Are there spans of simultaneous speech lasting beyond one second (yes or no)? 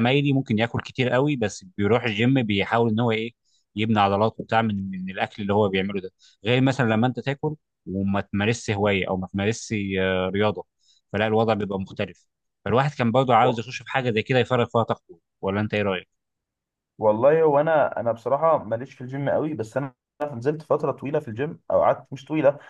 no